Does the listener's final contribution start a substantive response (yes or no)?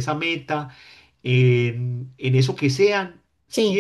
no